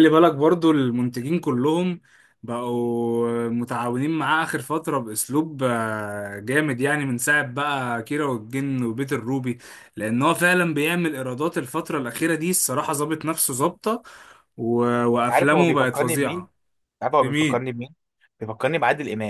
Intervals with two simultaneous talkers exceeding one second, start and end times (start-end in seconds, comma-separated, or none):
15.3-16.5